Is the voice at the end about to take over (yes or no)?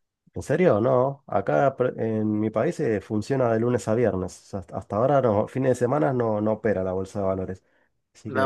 yes